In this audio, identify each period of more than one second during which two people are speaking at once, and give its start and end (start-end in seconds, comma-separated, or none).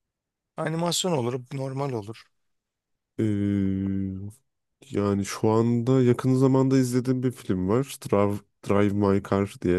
none